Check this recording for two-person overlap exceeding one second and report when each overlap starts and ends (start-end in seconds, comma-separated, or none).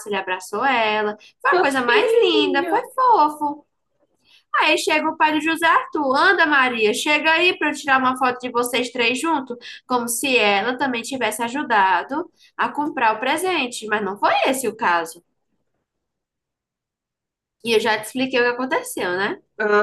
1.5-2.9